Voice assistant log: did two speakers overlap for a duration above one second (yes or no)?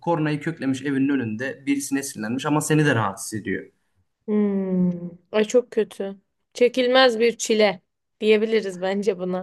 no